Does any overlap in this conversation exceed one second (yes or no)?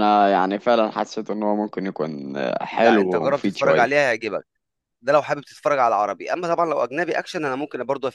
yes